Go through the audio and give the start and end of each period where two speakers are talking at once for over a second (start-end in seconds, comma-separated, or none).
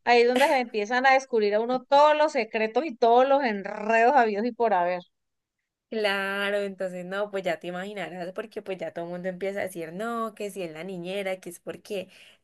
none